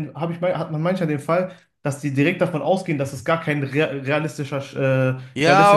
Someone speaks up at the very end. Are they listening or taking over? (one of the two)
taking over